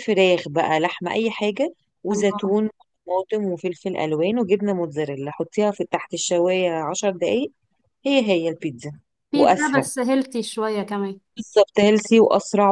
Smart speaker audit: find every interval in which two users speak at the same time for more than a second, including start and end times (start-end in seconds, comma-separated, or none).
none